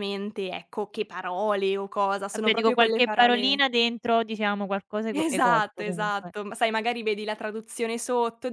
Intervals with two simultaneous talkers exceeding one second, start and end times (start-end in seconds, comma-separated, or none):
2.3-3.6, 5.1-6.3